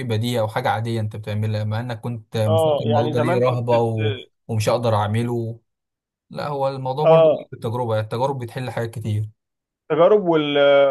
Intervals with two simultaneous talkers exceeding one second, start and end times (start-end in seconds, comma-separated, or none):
2.5-4.3